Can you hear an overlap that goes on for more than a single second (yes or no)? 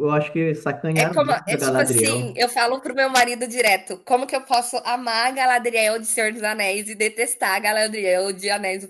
yes